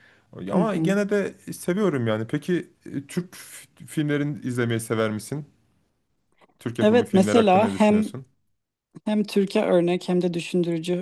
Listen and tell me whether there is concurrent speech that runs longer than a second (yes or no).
yes